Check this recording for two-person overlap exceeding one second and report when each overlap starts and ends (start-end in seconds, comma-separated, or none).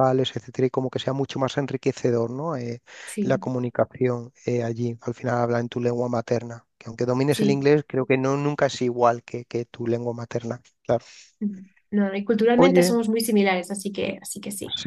none